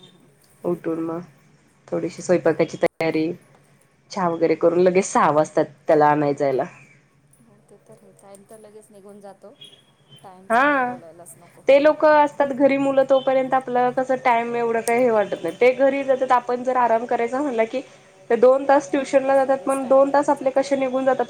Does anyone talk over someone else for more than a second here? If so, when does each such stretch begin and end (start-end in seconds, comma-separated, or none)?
19.1-20.6